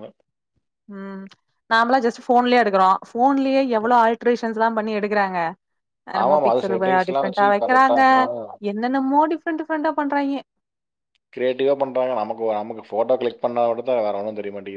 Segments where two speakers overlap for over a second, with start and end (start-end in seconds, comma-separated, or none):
6.2-8.0